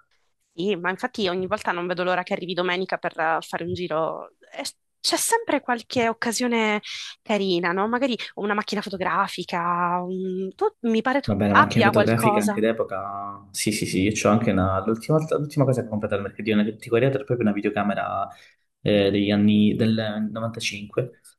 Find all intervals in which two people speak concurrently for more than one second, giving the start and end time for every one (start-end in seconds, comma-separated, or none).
11.3-12.6